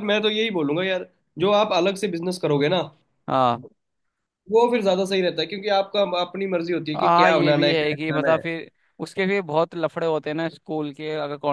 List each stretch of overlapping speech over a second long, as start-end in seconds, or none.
7.0-8.4